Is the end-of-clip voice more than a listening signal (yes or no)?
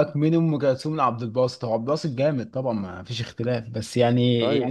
no